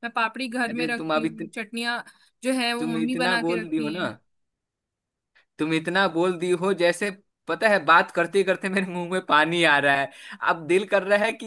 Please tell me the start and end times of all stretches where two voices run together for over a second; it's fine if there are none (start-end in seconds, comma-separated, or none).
2.8-4.1